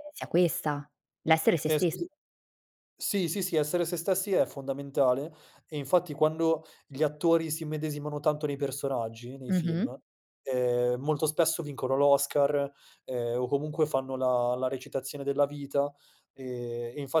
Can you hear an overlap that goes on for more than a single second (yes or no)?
no